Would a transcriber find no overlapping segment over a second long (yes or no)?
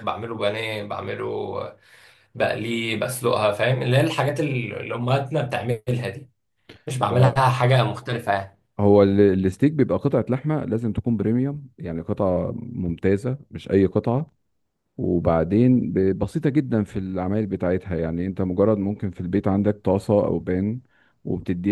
yes